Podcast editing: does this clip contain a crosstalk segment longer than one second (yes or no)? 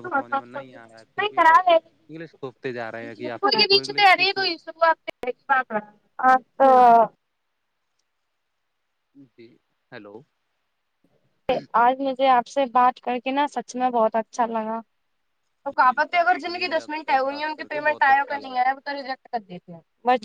yes